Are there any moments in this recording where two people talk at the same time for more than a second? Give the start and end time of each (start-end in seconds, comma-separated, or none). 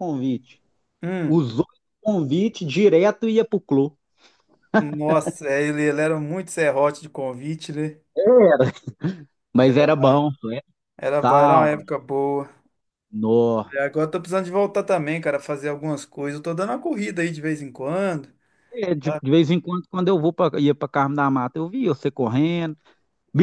none